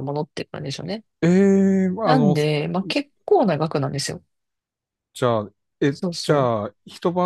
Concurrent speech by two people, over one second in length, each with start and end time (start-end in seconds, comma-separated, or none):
none